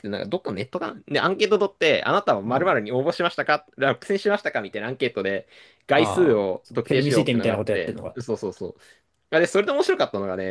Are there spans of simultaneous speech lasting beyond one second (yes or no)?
yes